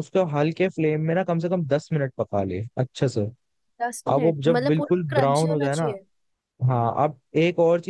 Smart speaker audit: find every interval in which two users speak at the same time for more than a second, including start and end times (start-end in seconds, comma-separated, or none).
4.1-5.9